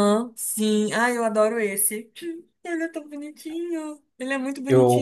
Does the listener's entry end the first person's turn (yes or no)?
yes